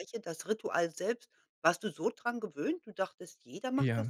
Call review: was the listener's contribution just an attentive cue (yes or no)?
no